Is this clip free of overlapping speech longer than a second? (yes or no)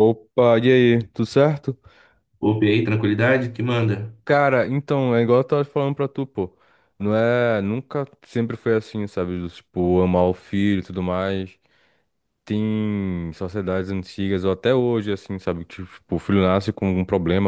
yes